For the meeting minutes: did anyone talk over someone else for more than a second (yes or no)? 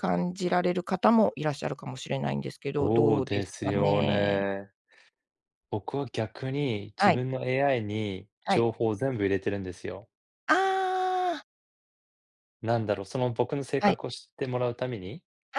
yes